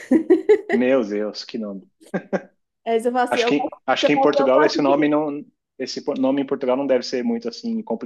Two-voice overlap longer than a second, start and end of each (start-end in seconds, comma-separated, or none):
3.3-5.1